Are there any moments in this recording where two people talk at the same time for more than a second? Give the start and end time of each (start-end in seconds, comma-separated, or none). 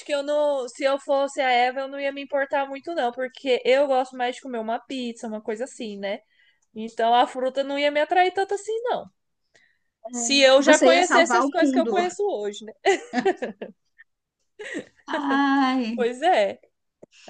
10.6-11.9